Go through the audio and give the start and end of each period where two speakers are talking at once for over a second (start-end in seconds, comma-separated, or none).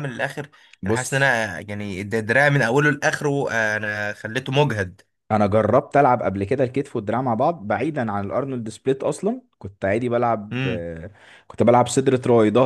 none